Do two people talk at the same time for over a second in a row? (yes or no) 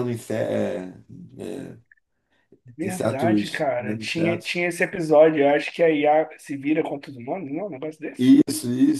yes